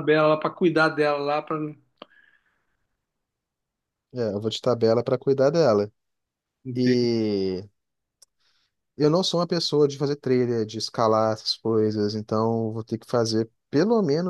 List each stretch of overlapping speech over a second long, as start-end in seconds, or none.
none